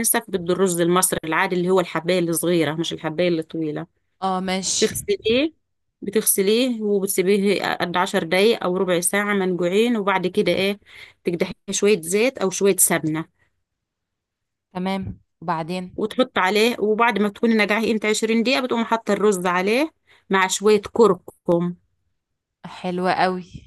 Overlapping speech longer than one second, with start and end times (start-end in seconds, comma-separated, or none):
none